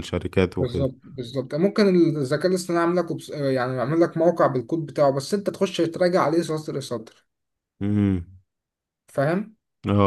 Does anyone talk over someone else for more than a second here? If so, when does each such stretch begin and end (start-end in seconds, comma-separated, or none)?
none